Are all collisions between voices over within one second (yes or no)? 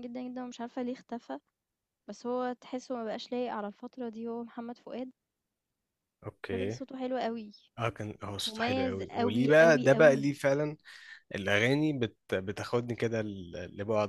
no